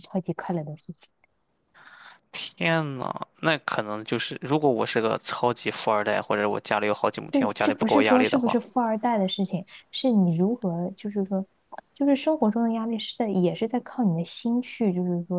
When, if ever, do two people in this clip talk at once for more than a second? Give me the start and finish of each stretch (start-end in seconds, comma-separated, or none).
7.3-8.6